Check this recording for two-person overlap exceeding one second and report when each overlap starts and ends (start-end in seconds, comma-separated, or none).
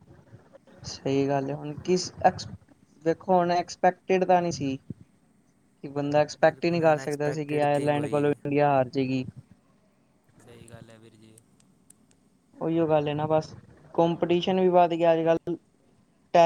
6.4-8.4